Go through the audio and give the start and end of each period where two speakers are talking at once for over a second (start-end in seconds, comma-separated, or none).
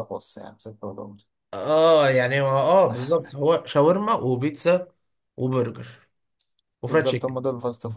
none